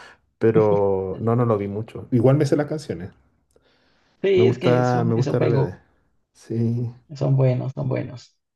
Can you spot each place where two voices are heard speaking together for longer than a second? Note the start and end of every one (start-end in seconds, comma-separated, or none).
4.3-5.7